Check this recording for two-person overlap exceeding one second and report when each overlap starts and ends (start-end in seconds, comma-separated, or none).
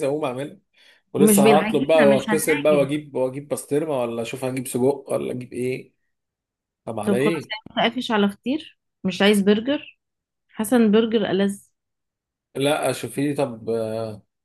1.2-2.9